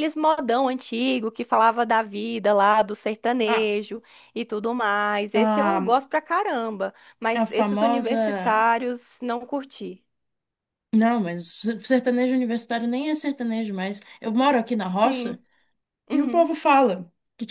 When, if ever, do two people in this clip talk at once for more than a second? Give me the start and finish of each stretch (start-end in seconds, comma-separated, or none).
7.3-8.6